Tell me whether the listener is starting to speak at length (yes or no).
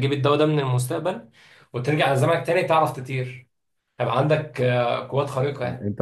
yes